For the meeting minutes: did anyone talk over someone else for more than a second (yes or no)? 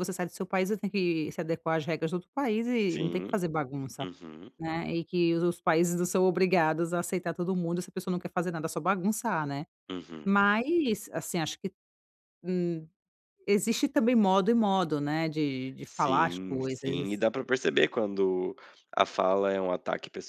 yes